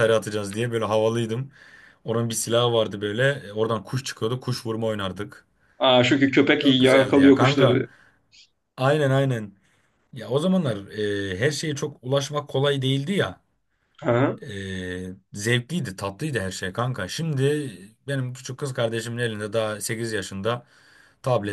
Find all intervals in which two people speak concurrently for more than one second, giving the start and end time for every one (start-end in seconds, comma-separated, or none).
6.6-7.8